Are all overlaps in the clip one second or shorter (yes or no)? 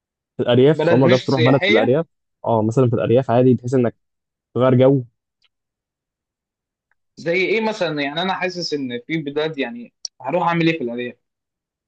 no